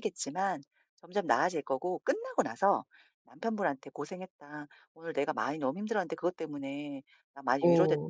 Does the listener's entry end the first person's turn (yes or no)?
no